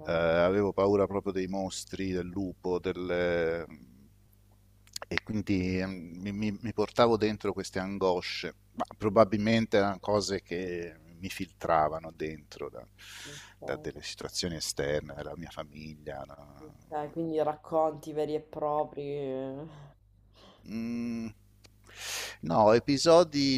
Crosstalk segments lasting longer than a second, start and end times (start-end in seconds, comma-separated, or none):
none